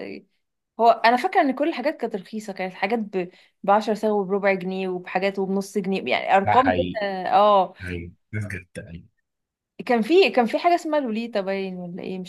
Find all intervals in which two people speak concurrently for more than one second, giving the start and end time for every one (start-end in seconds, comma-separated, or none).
none